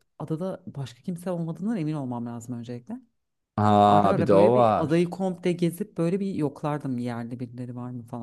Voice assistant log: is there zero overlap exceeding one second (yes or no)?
no